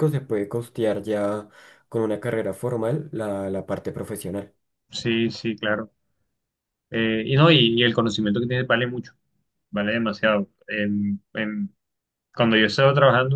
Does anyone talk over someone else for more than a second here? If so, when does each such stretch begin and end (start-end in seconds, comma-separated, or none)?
none